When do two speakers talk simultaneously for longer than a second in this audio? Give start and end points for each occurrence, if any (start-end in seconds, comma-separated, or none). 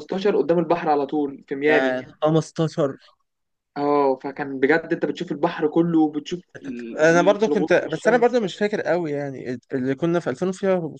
7.0-8.4